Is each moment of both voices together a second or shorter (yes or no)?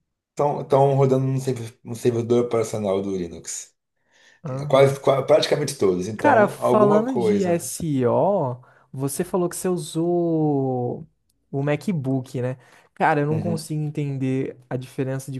no